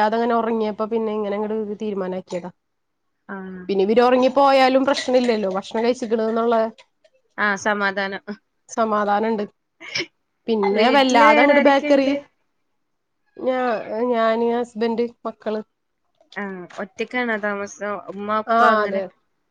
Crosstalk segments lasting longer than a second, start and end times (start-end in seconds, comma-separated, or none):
10.8-12.1